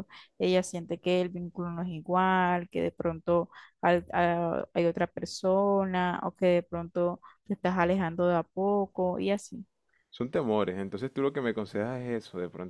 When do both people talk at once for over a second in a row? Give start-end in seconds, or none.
none